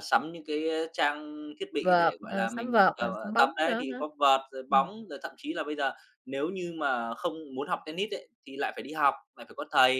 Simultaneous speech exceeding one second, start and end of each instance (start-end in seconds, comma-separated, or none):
1.8-4.0